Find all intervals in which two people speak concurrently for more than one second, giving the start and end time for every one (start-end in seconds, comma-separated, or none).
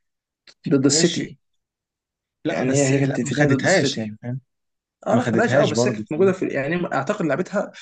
2.5-4.1, 5.1-6.3